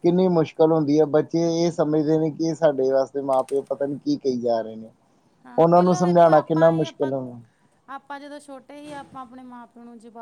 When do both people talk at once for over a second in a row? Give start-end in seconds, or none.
5.6-7.1